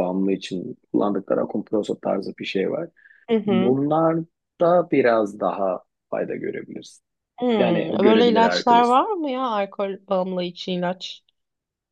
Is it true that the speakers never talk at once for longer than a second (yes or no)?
no